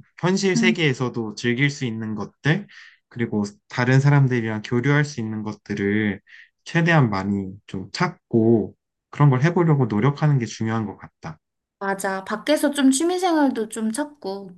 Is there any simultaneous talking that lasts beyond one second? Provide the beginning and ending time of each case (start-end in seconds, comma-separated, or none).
none